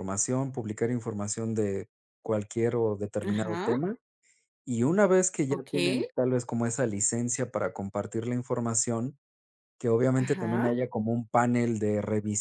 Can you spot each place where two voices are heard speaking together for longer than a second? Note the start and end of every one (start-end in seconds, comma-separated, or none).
none